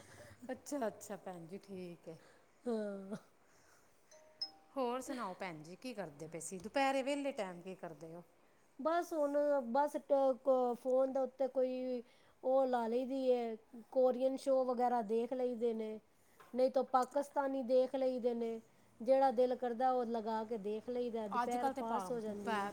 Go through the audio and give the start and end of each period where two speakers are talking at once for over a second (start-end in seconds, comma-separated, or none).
none